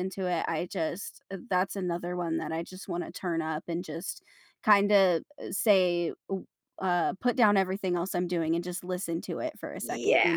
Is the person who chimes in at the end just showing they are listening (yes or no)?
no